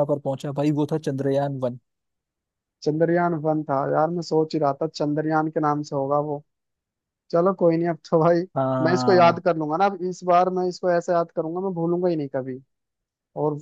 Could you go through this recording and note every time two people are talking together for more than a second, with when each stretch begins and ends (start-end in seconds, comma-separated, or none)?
none